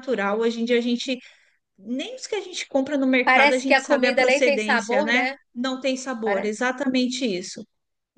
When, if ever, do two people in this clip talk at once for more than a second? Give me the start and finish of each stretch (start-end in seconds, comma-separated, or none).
3.3-5.3